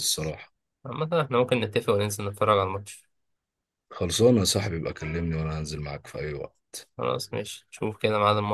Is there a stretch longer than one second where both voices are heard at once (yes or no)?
no